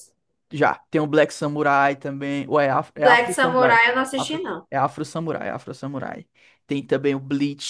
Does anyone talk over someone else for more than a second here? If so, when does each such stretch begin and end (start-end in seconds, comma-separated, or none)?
3.0-4.7